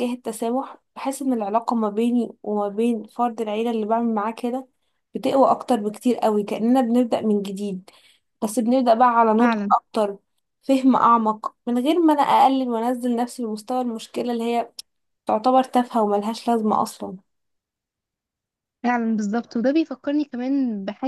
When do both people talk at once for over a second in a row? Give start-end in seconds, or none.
none